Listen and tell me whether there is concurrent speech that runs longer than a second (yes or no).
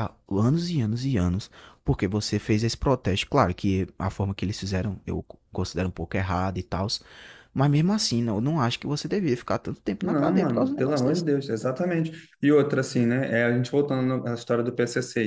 yes